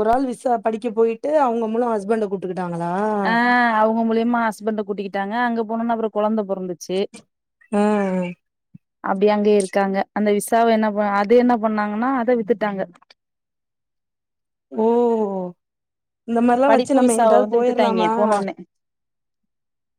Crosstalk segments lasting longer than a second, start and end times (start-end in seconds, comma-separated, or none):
16.7-18.1